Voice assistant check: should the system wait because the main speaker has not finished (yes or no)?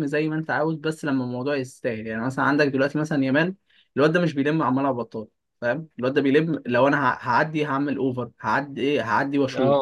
no